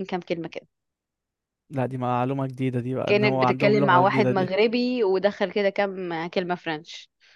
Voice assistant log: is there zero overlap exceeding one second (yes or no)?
no